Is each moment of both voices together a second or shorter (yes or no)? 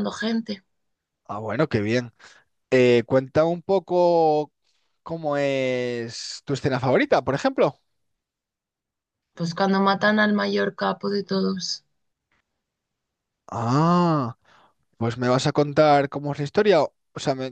yes